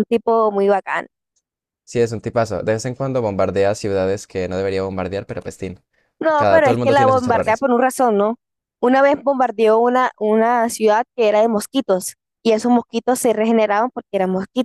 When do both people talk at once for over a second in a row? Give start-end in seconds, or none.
6.4-7.6